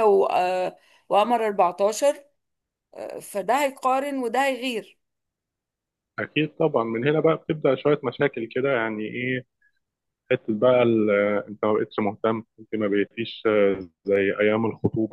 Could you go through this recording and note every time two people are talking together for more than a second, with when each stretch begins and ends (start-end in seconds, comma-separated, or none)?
none